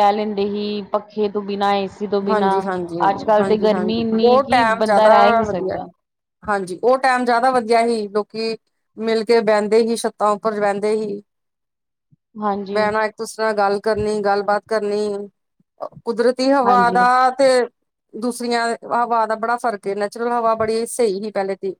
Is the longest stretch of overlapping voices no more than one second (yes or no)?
no